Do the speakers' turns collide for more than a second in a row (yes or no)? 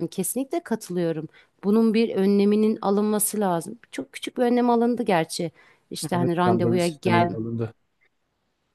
yes